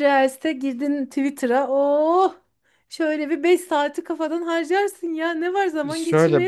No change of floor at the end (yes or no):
no